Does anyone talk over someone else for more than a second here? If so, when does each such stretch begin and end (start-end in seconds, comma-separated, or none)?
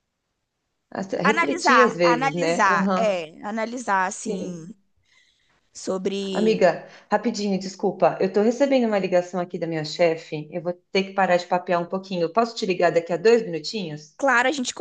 1.2-3.2